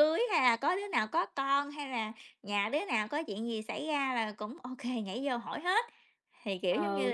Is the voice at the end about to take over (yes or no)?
yes